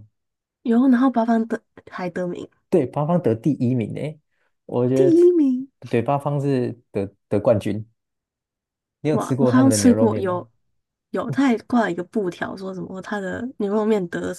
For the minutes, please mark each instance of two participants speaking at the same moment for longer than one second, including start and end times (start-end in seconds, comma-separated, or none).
9.1-10.5